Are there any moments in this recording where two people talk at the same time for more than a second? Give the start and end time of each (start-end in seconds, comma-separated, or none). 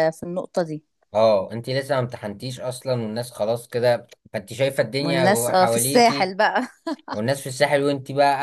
5.0-6.3